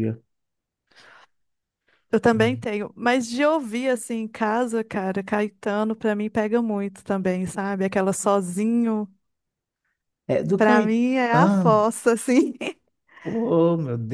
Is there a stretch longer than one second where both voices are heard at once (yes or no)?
yes